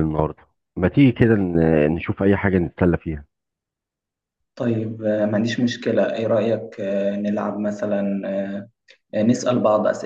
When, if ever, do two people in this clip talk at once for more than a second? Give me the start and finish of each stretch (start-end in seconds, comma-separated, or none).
none